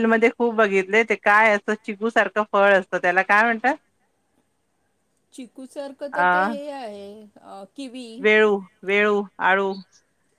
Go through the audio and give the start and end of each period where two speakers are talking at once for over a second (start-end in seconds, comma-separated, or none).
none